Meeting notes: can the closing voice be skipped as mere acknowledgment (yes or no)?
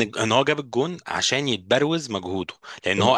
yes